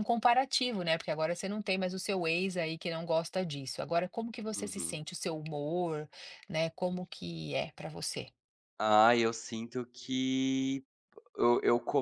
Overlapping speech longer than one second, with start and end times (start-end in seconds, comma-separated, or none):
none